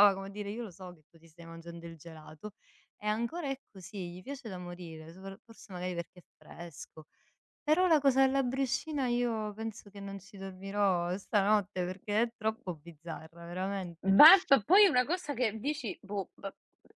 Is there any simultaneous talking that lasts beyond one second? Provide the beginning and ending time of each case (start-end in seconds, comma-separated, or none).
none